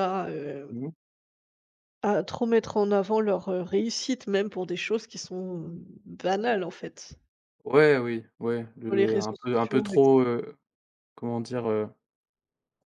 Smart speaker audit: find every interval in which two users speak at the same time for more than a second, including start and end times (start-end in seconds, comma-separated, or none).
8.8-10.2